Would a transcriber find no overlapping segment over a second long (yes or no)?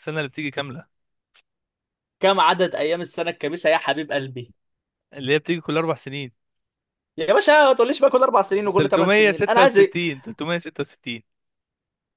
no